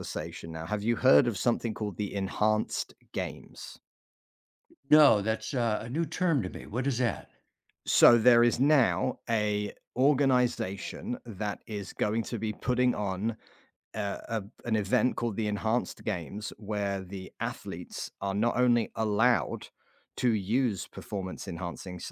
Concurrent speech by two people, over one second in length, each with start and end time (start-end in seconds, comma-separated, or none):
none